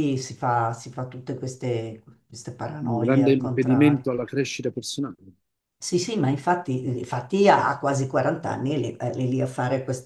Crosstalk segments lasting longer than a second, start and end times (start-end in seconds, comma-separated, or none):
2.9-4.1